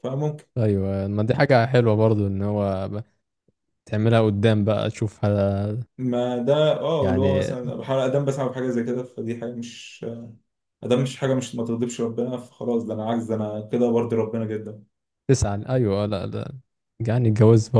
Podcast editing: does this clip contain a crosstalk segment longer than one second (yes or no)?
no